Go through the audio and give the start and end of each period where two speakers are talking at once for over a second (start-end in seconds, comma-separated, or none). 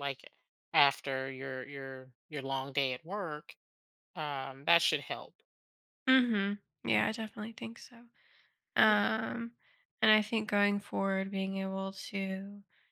none